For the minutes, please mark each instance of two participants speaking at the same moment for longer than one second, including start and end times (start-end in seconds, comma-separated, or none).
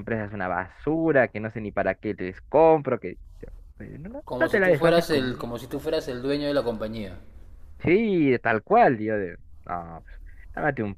4.2-5.5